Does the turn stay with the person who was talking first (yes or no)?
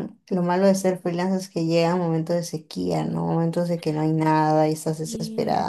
yes